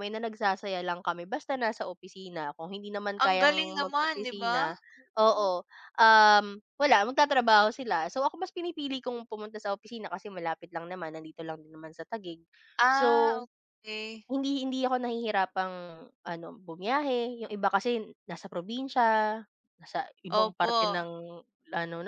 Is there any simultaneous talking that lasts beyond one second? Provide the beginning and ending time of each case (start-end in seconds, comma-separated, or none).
3.2-4.6